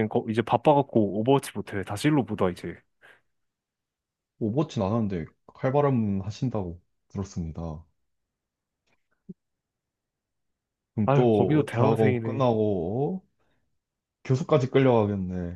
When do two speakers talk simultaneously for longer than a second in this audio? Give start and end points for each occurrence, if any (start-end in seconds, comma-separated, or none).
11.1-12.5